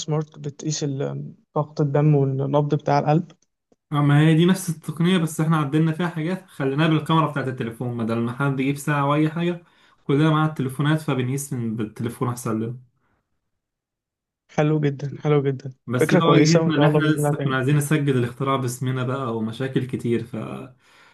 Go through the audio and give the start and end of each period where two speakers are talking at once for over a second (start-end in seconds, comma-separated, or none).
15.9-17.6